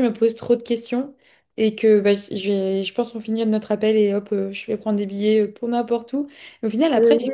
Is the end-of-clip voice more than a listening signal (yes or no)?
no